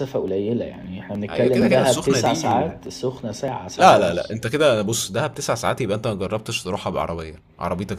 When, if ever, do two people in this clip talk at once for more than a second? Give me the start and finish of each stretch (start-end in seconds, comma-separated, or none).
1.3-2.6